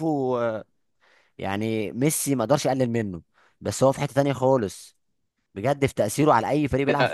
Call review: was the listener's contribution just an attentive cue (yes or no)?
no